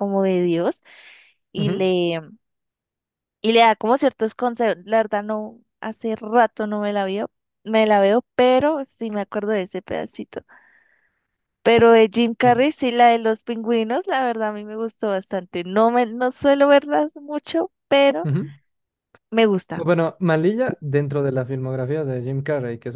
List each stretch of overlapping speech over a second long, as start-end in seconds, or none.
none